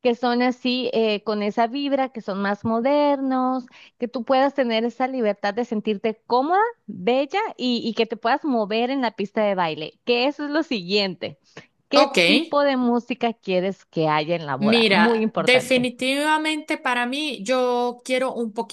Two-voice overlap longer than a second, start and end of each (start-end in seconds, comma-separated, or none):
14.6-15.9